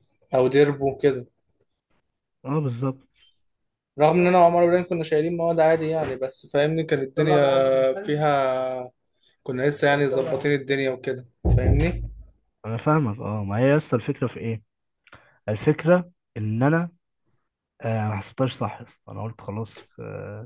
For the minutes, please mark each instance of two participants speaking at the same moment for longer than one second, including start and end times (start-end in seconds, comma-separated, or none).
none